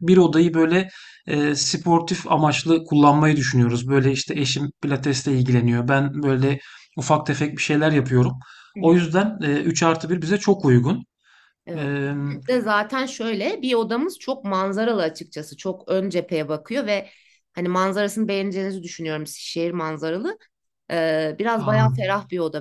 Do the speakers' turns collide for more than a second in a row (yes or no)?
no